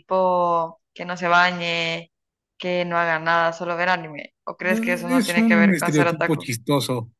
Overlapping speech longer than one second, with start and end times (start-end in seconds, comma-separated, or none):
5.1-6.5